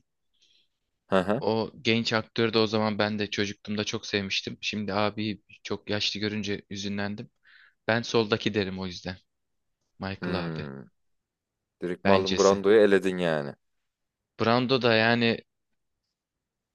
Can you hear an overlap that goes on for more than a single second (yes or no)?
no